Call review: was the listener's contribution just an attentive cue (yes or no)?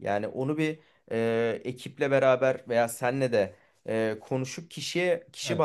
yes